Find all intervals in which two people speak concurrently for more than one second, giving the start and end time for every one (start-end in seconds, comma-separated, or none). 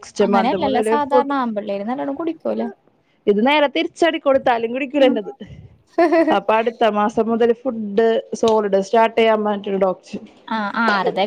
none